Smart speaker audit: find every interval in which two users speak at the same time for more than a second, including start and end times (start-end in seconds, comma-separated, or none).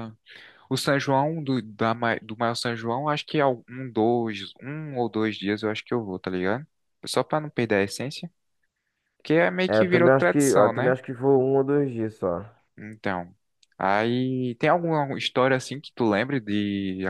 9.7-10.9